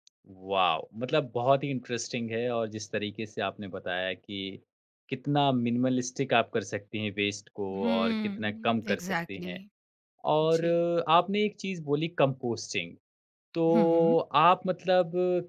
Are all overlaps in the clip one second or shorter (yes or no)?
no